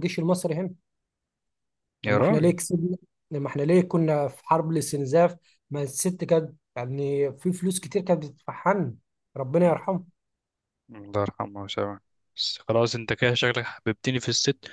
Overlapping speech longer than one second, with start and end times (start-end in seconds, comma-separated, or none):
none